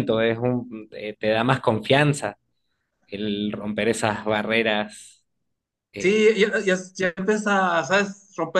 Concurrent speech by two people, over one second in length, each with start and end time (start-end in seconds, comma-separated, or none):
none